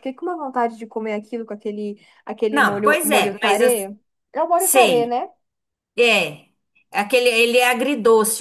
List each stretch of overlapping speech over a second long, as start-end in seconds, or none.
2.5-3.9